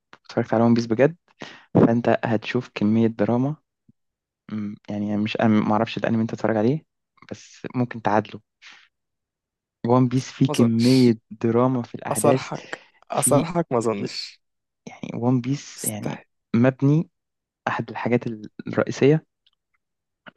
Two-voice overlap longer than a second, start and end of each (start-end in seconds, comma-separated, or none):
none